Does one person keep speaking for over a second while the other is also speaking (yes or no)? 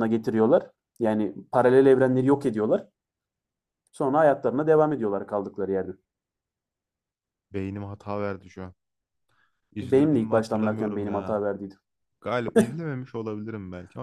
yes